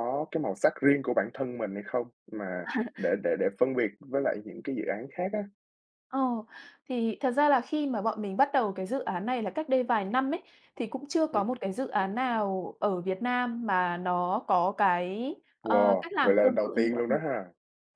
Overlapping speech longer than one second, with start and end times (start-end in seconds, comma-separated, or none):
15.6-17.2